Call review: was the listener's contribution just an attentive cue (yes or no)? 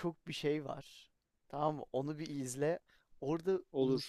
yes